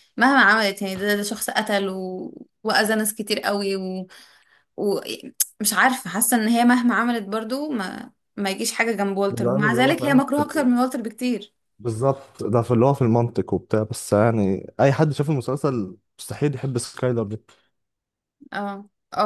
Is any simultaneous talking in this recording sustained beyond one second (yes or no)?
yes